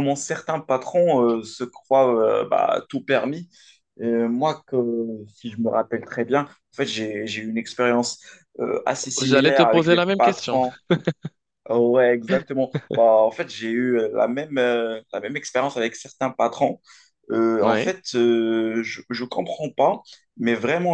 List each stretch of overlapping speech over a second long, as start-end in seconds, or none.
9.2-10.6